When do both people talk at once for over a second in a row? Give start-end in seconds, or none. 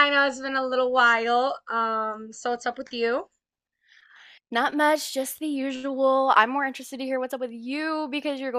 none